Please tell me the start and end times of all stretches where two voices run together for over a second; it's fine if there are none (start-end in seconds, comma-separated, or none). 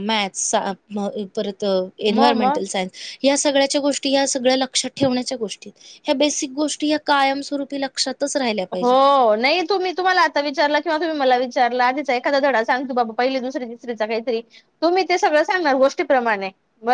none